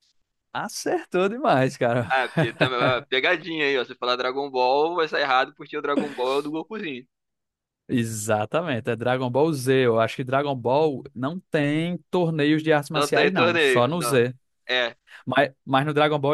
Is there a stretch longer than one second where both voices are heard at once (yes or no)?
yes